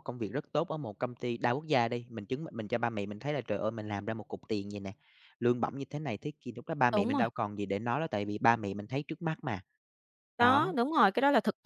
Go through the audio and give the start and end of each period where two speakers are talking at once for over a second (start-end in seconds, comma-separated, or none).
none